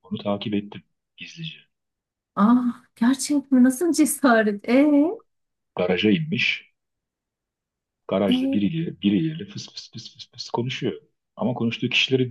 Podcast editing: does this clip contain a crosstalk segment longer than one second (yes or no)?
no